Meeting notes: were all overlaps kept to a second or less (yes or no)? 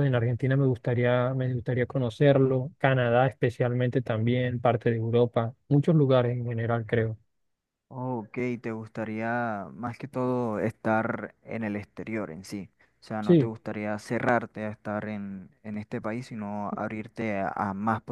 yes